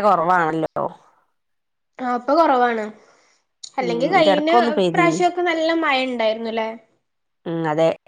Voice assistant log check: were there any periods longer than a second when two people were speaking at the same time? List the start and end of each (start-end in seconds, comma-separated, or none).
3.8-5.2